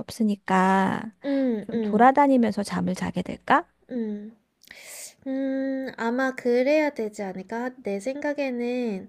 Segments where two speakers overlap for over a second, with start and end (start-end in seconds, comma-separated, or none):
none